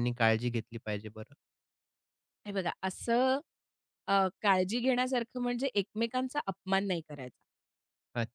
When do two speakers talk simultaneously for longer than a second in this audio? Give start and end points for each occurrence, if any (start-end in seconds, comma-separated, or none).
none